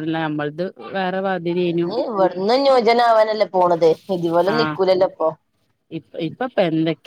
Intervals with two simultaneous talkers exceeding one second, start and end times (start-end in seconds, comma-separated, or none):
none